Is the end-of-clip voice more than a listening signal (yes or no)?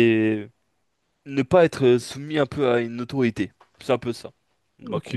yes